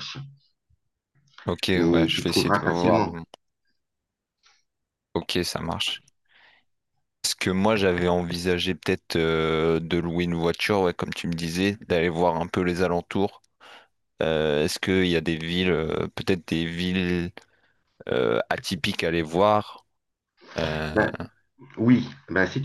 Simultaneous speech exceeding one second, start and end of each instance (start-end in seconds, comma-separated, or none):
1.8-3.2